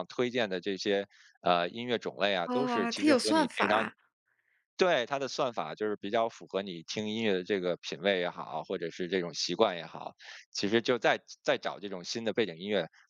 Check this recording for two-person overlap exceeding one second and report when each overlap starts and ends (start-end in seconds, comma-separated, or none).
2.4-3.9